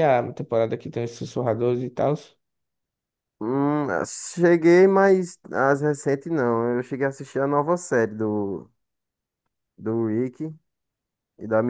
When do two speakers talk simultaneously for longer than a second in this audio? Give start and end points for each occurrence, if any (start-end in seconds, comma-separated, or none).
none